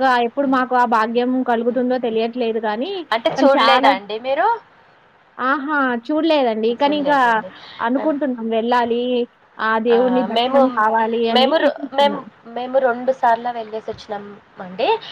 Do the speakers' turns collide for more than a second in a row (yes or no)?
no